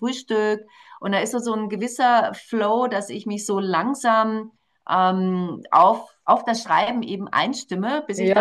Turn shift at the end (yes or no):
yes